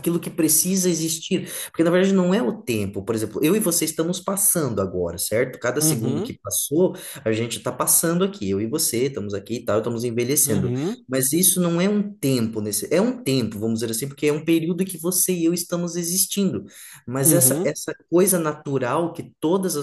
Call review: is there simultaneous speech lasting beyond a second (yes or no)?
no